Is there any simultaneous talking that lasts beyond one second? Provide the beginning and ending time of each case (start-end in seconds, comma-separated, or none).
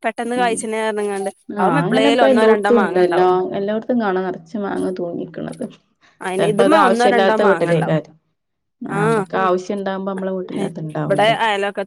6.4-8.0